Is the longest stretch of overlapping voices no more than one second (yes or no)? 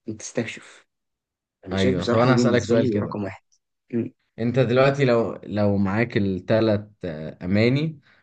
no